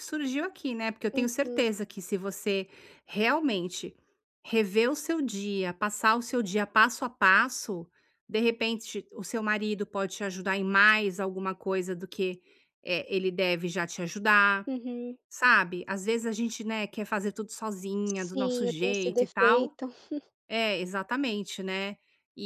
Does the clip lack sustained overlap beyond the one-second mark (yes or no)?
no